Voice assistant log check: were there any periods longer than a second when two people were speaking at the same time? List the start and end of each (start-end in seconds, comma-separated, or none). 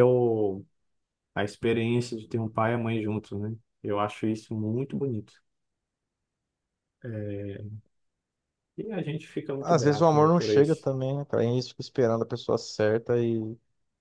9.6-10.9